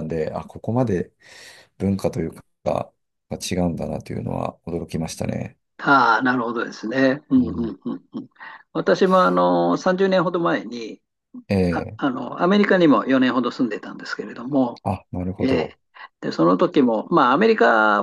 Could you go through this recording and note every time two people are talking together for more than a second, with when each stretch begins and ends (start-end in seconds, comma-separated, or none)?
none